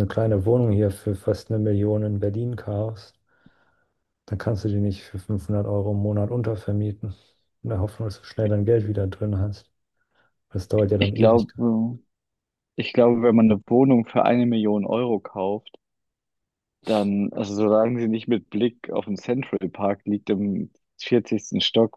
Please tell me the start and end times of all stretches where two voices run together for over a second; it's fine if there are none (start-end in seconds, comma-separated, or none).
none